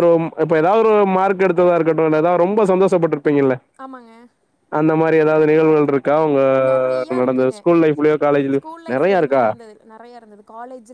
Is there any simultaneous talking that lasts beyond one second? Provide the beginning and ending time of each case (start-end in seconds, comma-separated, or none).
none